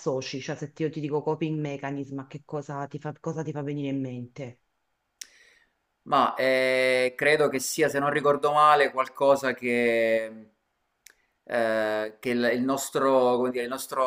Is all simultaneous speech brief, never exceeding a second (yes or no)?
yes